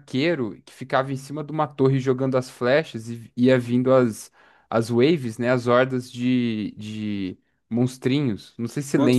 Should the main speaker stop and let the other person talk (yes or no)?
yes